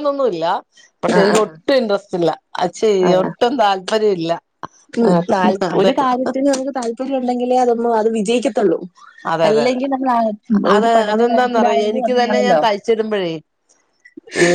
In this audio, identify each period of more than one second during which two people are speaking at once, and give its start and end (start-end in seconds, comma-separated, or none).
10.8-12.6